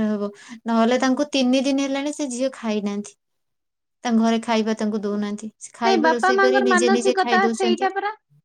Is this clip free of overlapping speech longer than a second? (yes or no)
no